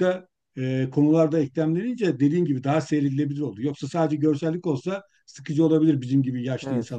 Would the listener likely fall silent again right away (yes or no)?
no